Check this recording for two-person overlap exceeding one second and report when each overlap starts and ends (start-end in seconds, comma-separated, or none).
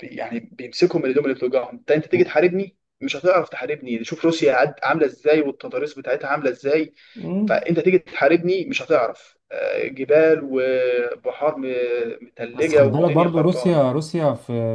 12.5-13.8